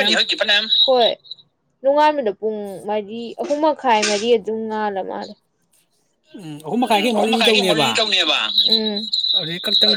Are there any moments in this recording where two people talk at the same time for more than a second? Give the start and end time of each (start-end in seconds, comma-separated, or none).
none